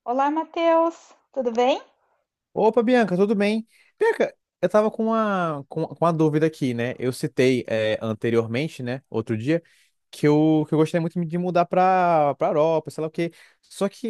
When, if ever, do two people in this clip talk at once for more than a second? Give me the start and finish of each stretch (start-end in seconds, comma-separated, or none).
none